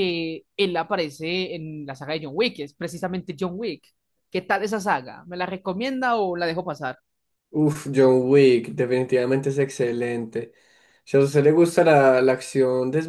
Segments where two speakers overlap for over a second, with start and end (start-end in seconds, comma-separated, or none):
none